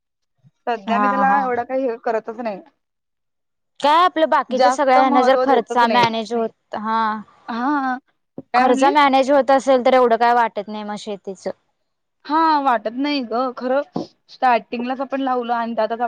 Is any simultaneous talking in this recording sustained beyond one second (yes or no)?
yes